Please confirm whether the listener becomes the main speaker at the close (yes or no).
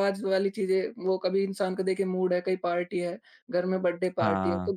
no